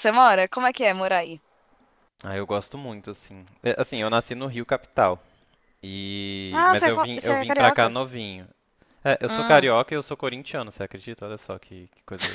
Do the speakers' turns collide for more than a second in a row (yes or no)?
yes